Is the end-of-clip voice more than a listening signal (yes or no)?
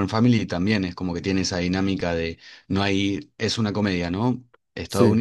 no